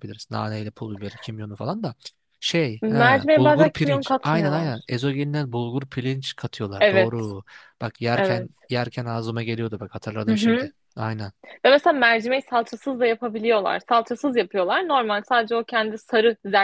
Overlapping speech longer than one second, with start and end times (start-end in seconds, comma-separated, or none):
2.8-4.9